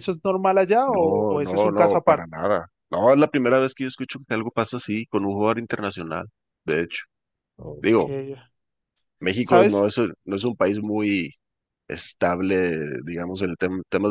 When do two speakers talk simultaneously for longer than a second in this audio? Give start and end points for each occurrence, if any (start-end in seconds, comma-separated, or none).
0.9-2.3